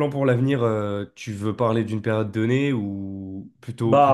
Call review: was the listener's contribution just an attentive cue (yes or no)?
no